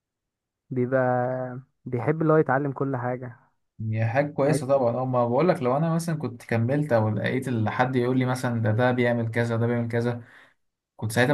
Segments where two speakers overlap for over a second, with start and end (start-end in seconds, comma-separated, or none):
none